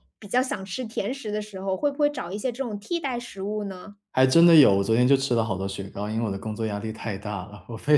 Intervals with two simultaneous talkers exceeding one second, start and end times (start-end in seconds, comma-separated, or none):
none